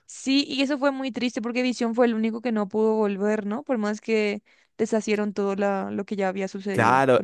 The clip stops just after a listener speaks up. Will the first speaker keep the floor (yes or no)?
no